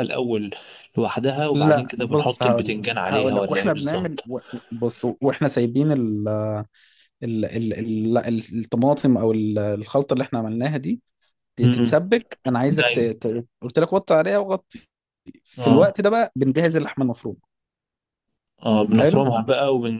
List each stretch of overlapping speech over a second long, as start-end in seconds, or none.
1.5-4.2